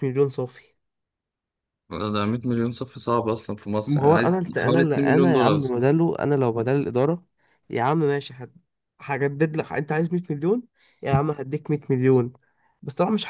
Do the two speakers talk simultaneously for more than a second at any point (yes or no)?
yes